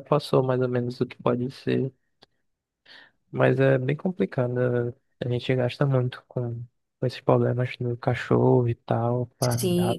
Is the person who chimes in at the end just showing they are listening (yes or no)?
no